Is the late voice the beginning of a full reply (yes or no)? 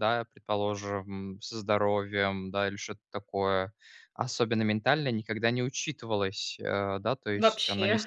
no